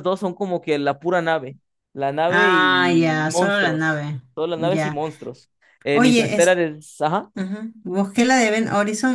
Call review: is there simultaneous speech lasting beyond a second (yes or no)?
yes